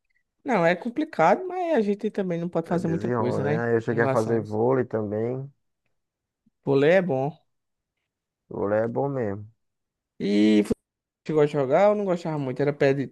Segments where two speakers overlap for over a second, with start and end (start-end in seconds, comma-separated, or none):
2.7-4.6